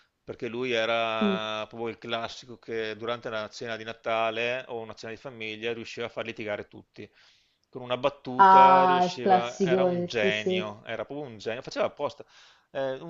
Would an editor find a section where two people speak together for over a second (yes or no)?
yes